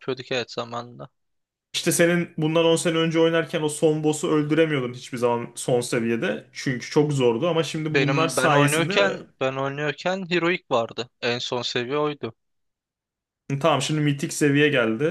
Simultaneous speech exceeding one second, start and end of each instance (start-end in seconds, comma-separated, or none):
7.9-9.2